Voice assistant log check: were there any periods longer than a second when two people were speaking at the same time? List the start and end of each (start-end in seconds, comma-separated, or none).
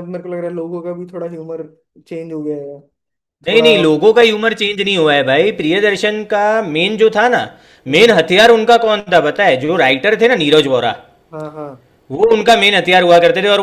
none